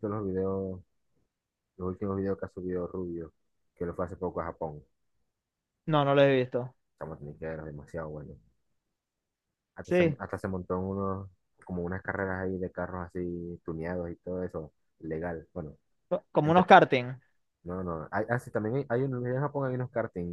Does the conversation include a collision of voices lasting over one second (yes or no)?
no